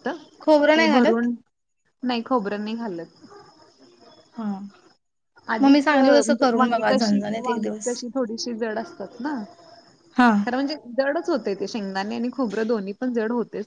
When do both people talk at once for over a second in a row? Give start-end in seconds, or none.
5.6-7.9